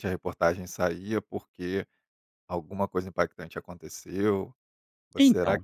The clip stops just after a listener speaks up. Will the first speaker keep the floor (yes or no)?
yes